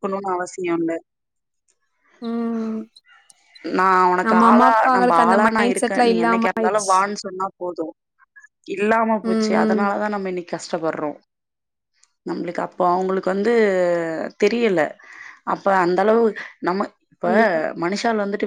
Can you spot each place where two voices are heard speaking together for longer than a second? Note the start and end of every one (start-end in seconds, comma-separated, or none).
4.3-6.9